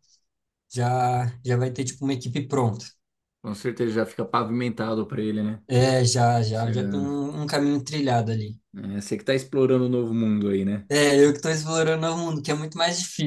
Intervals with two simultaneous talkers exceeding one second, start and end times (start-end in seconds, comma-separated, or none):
none